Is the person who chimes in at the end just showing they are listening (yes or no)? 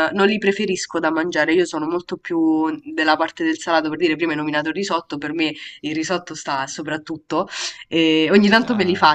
yes